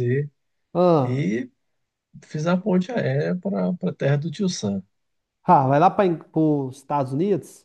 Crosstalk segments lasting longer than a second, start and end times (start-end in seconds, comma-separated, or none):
none